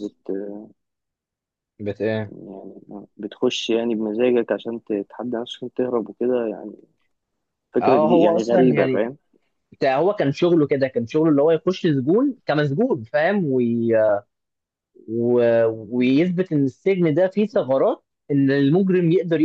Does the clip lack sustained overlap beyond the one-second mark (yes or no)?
no